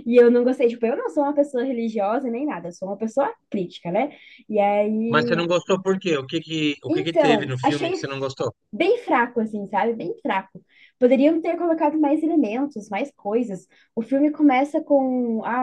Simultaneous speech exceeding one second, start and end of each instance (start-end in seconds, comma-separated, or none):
6.9-8.3